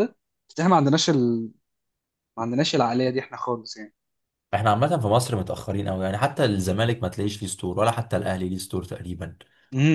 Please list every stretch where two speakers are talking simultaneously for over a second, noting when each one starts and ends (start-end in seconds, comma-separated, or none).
none